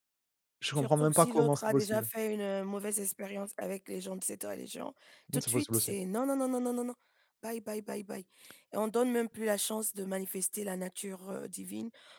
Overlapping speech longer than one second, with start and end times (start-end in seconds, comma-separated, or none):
0.7-2.1